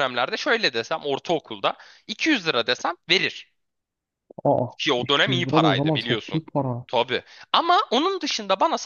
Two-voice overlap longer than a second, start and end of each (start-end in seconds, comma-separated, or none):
5.0-6.4